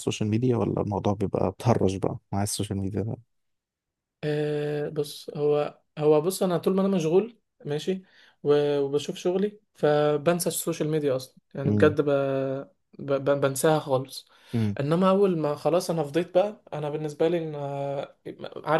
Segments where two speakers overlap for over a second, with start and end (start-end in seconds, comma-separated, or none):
none